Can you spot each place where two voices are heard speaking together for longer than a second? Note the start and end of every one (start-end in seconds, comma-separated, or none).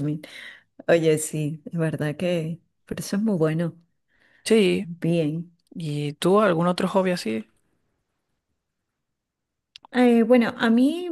none